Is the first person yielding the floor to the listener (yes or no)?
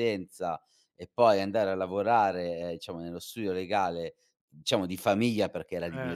no